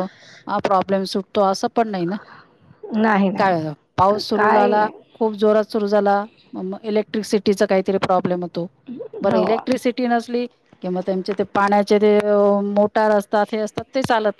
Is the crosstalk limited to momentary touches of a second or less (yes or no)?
no